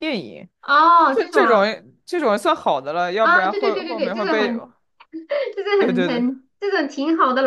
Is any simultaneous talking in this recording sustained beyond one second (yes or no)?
yes